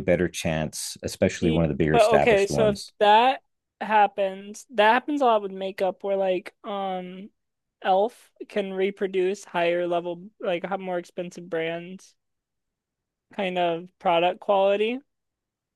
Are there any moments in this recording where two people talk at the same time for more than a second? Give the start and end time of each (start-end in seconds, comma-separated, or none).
1.3-2.9